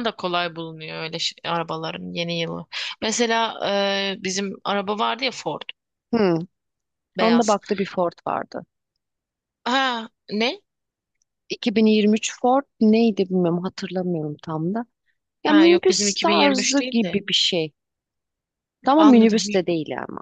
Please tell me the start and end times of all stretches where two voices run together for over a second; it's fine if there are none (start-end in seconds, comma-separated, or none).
15.4-17.2